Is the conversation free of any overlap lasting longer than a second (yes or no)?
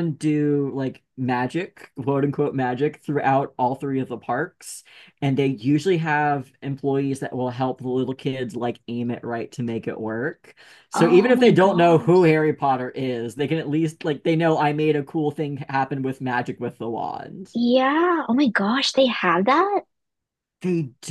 no